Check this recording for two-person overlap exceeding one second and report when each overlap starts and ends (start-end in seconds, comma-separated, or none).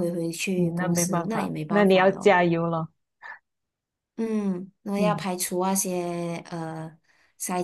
0.6-2.4